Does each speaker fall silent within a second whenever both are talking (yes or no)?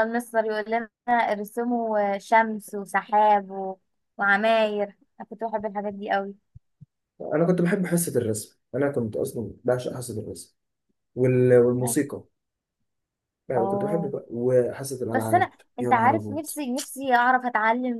no